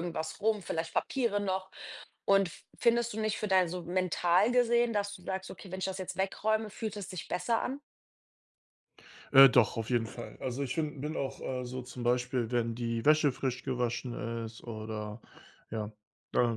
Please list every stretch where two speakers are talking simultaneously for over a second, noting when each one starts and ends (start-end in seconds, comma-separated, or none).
none